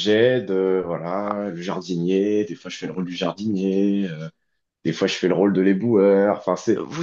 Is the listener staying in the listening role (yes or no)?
no